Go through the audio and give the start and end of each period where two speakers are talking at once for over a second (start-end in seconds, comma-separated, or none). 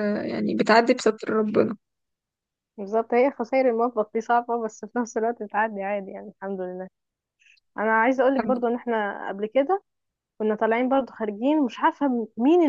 none